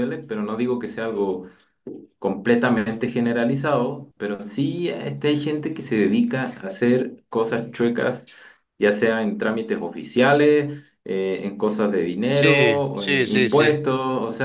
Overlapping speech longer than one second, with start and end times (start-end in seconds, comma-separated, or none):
12.3-13.8